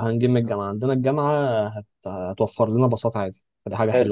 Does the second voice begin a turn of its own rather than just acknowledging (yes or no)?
yes